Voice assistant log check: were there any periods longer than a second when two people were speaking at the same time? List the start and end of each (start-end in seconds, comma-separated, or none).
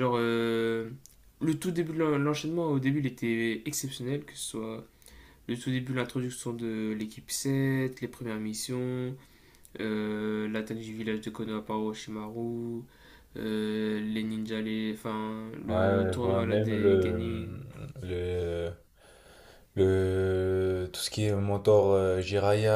15.7-17.2